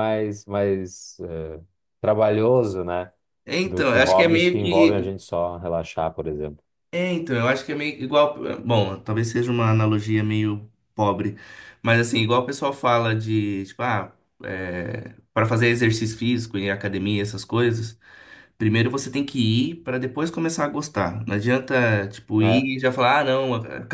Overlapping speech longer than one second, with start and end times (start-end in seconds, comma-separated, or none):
3.6-5.1